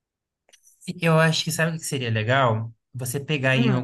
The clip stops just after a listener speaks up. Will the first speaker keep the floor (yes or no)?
yes